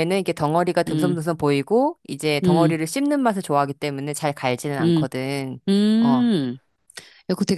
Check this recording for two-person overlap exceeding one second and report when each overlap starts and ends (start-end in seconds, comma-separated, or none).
none